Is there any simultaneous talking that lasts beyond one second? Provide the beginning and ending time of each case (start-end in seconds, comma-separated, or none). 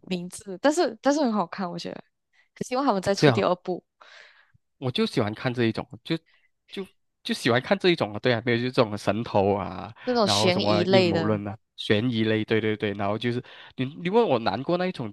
10.0-11.4